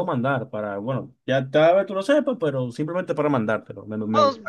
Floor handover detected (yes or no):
yes